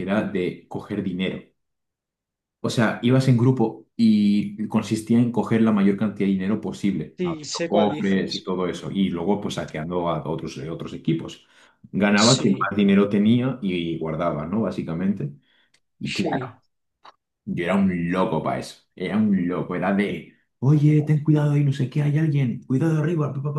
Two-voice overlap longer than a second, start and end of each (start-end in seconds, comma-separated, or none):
7.2-8.5